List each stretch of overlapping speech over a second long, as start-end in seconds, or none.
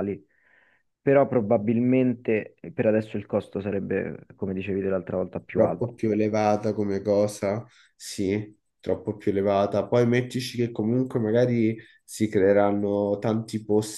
none